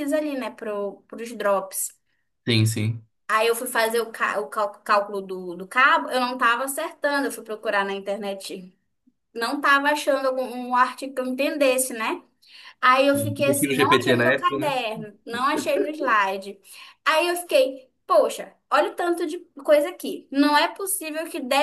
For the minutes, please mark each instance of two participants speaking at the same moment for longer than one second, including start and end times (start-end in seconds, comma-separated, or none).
13.1-14.8